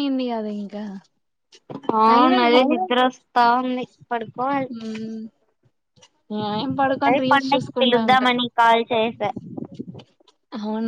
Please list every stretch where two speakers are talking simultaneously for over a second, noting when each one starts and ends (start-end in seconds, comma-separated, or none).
6.9-8.3